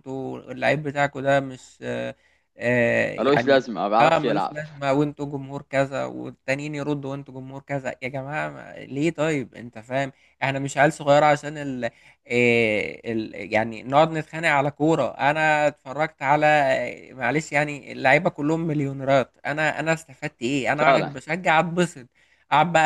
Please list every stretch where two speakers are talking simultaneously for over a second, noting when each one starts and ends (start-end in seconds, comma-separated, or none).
3.2-4.5